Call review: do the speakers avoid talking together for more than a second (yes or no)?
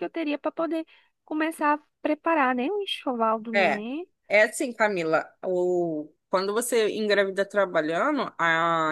yes